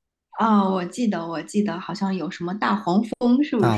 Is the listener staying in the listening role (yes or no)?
no